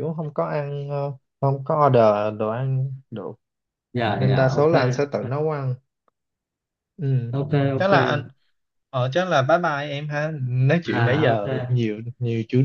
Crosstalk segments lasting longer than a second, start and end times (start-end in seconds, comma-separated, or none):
none